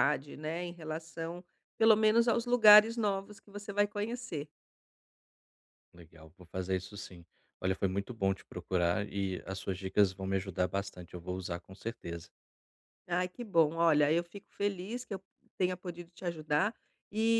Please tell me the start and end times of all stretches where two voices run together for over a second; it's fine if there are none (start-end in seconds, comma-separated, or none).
none